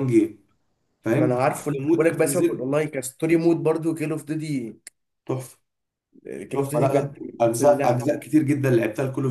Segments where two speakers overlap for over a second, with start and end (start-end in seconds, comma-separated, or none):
1.1-2.7, 6.5-8.0